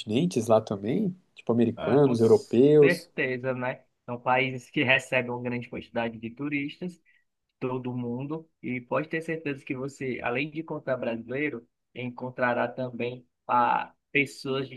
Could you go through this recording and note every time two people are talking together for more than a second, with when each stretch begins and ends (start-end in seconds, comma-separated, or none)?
1.8-3.1